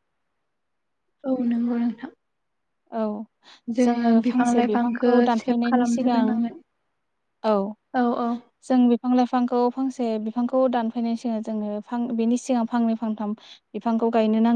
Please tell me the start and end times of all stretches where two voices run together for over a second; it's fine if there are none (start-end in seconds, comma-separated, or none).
4.3-6.2